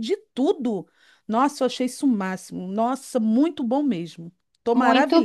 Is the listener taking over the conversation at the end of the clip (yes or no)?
yes